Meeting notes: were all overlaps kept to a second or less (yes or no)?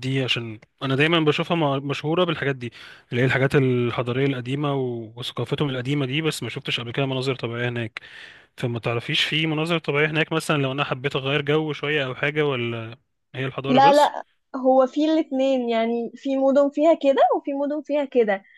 yes